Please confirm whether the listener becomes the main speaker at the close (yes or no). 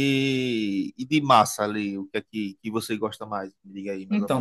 yes